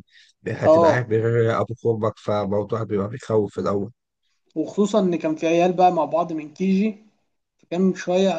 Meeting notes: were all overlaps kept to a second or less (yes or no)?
yes